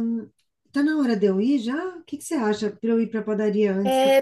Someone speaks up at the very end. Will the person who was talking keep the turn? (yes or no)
no